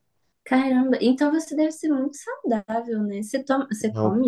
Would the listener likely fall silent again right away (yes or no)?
yes